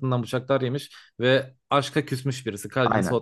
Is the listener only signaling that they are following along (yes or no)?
no